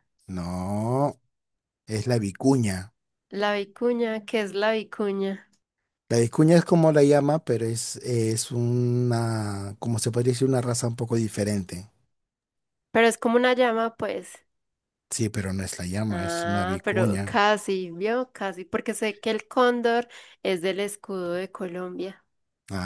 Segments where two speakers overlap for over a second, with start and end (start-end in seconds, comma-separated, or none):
16.1-17.4